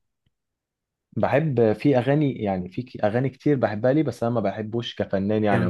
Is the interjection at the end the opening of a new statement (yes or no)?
yes